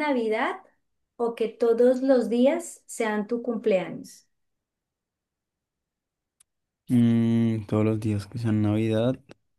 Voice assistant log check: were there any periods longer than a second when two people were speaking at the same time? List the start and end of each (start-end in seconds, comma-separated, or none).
none